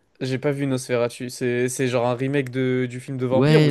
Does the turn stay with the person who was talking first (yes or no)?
no